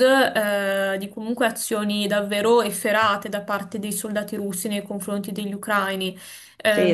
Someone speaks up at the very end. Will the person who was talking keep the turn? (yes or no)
no